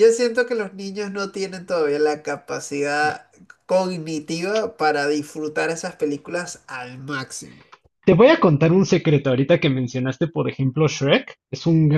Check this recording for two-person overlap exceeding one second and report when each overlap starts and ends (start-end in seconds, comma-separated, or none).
none